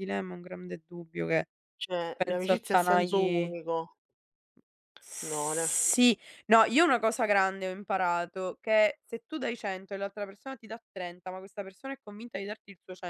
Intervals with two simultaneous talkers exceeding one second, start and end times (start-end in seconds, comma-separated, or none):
2.1-3.5